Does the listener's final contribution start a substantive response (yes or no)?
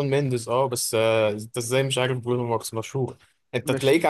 no